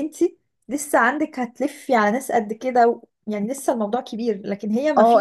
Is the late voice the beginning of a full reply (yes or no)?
yes